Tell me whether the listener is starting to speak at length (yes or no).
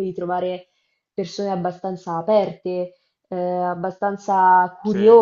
no